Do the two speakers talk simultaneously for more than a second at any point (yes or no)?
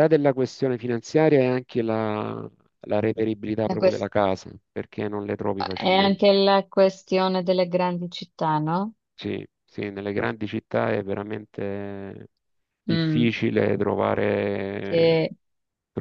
no